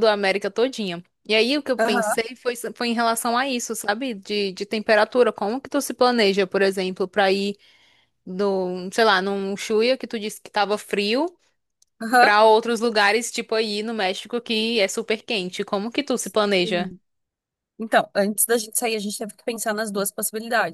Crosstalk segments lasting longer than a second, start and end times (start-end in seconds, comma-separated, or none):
none